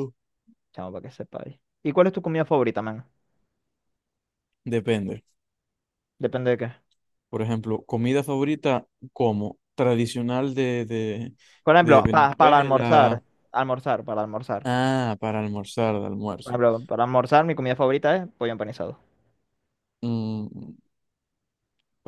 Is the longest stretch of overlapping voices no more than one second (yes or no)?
no